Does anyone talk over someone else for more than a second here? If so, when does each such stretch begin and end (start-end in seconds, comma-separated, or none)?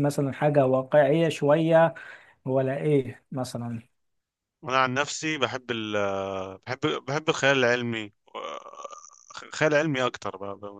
none